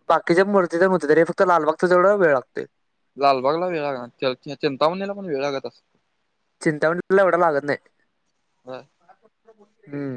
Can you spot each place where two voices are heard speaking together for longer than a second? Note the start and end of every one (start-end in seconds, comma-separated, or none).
none